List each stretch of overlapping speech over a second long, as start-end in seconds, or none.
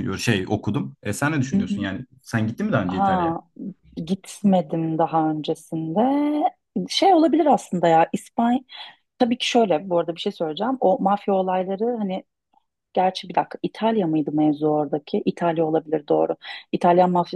none